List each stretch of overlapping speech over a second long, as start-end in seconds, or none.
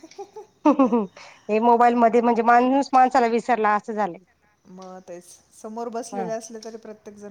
none